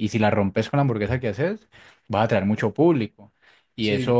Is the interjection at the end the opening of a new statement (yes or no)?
no